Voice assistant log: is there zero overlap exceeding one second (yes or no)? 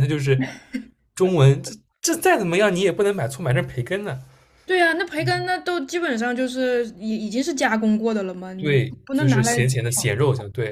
no